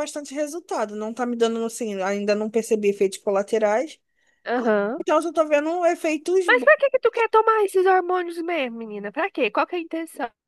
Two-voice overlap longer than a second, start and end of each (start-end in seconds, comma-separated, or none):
none